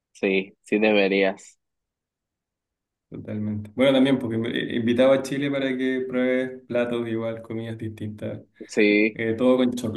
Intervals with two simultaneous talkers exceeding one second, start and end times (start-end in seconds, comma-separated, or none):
none